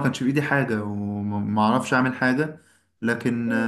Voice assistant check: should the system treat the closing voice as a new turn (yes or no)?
no